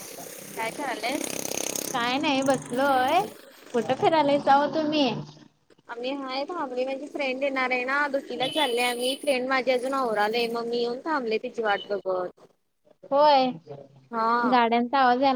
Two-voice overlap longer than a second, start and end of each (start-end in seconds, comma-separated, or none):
none